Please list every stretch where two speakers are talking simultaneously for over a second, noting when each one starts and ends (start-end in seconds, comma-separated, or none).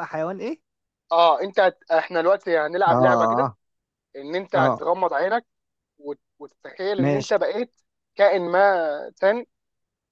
none